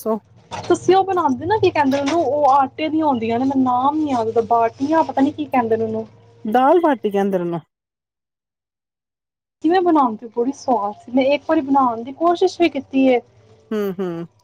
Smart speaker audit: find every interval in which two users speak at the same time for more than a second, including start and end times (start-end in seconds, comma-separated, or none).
none